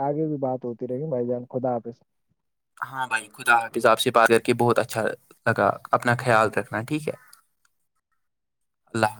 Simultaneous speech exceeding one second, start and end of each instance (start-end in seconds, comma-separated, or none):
none